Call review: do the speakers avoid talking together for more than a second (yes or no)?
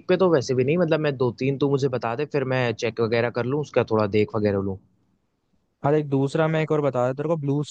yes